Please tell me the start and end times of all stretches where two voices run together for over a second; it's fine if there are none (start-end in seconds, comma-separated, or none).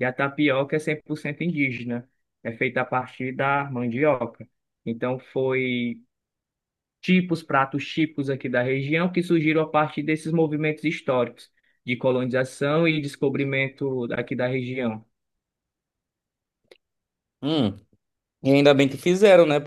none